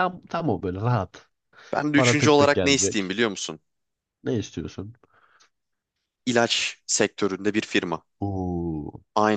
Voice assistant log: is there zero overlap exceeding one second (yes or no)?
no